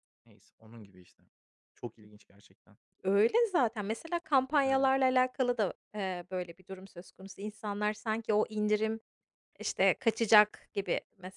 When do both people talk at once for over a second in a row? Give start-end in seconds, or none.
none